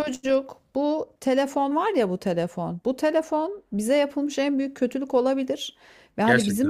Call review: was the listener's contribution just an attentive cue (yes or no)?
yes